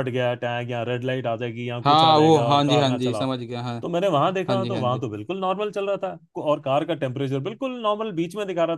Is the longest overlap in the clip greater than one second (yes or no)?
yes